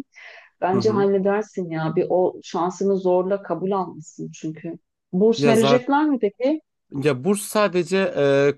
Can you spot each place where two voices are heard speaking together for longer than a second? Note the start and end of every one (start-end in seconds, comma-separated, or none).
none